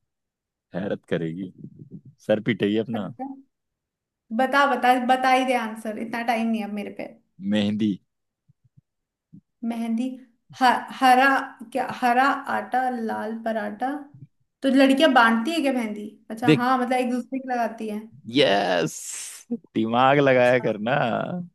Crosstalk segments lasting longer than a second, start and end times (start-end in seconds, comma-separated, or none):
none